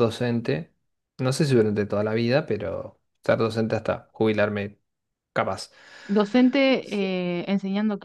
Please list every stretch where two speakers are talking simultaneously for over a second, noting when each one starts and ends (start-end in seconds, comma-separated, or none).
none